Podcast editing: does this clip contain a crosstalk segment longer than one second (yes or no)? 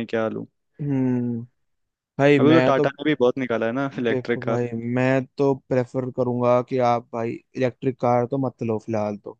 no